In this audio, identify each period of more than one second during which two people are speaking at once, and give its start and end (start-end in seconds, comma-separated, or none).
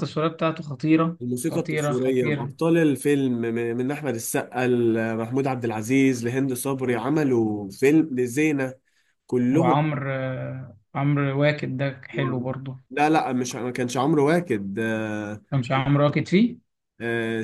1.2-2.5